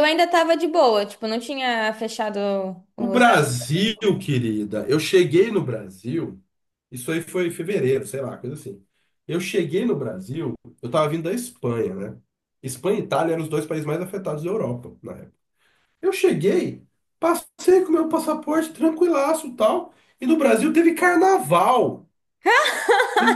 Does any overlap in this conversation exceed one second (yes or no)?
no